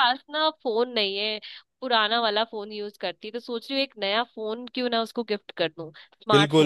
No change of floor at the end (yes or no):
no